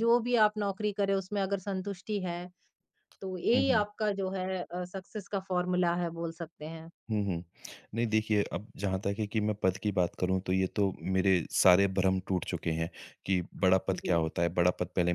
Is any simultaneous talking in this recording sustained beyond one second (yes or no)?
no